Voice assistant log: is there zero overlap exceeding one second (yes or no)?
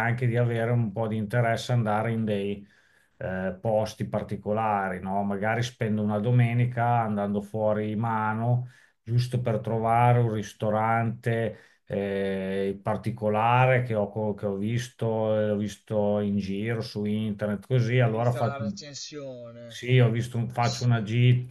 yes